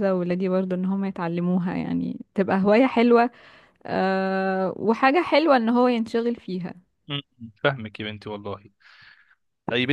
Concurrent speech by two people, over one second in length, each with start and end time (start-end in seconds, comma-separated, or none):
none